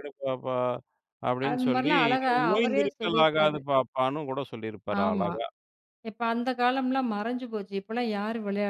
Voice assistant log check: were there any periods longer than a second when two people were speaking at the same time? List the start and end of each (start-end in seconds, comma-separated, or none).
1.5-3.6